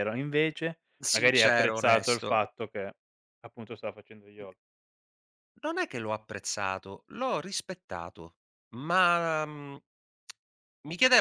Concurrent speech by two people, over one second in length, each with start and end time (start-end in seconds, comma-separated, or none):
1.0-2.4